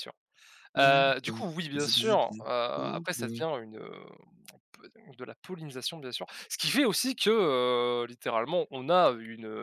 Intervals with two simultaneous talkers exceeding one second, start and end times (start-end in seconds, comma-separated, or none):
0.8-3.4